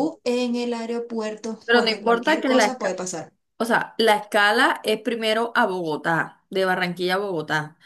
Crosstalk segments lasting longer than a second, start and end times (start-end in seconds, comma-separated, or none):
1.6-3.0